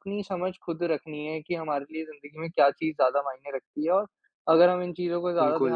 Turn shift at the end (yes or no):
no